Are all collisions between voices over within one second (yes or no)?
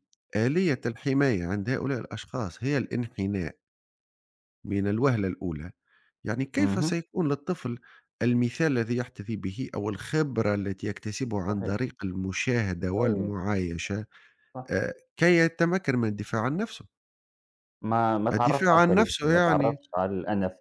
no